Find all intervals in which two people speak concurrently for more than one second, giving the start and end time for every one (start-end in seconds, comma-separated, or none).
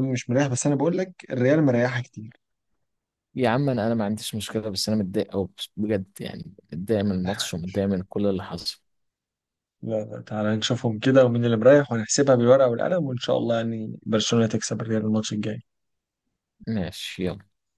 none